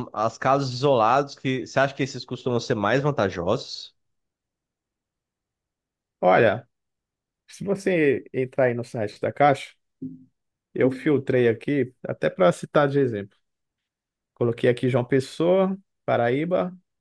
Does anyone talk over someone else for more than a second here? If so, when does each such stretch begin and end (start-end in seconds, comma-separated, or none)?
none